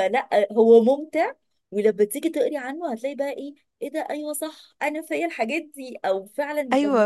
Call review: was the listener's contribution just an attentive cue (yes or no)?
no